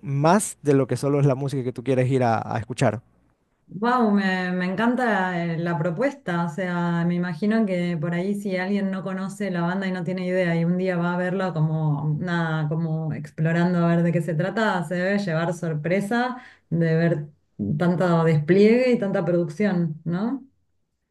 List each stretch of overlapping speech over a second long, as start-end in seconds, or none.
none